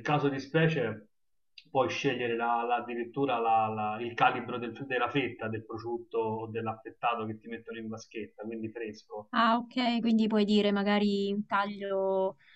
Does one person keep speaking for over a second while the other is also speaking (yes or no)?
no